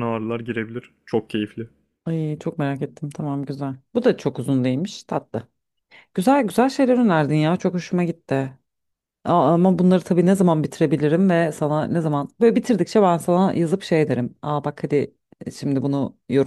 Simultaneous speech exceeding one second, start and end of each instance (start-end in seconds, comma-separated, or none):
none